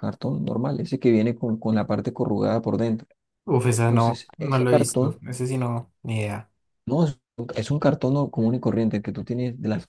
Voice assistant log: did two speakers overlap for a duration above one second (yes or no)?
yes